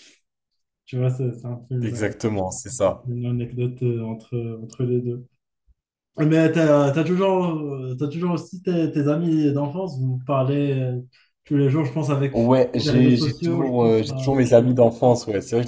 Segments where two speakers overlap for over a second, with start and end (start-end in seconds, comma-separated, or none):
12.7-14.7